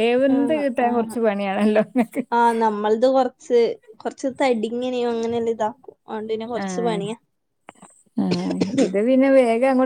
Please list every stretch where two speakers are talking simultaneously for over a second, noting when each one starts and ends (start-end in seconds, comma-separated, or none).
none